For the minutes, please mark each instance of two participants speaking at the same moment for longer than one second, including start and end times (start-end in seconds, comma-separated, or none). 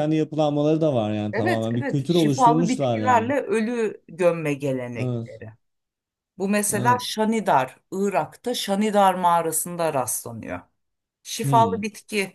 1.3-3.3